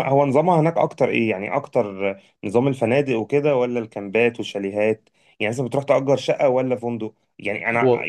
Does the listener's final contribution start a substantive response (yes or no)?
no